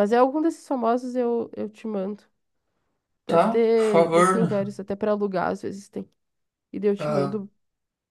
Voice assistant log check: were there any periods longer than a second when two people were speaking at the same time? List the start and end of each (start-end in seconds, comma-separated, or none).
3.2-4.5